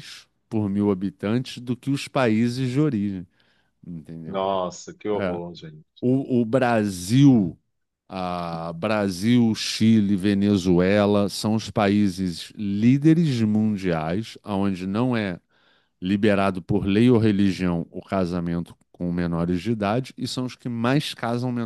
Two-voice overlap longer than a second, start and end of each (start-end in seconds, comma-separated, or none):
none